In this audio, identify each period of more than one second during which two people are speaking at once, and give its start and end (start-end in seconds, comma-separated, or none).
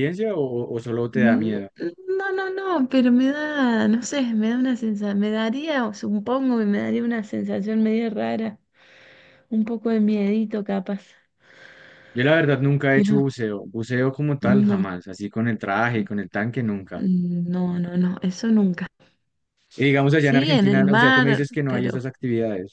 20.1-22.0